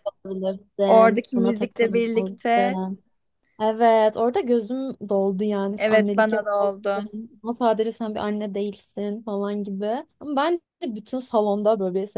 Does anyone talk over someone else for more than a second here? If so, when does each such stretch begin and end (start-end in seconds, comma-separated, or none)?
0.8-2.8, 5.8-7.0